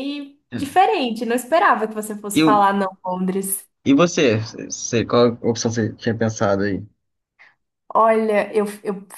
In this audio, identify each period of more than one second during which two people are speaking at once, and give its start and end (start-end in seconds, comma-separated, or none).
none